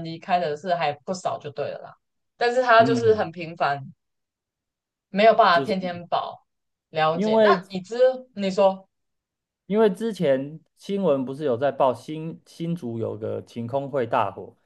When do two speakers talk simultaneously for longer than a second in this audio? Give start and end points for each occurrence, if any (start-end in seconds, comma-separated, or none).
none